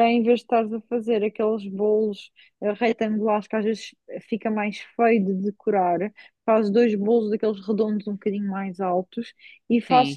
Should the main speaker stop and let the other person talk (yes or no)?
no